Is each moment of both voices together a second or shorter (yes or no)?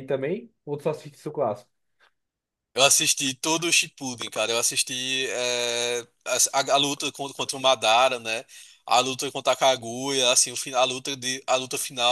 yes